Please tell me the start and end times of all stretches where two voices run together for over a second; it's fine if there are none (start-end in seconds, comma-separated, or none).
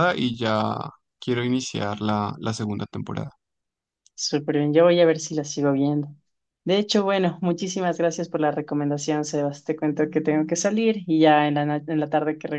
none